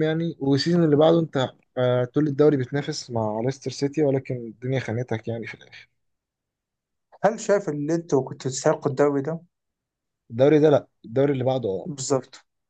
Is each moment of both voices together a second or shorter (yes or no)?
yes